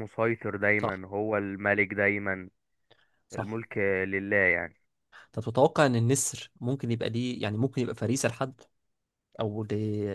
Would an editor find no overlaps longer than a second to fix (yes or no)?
yes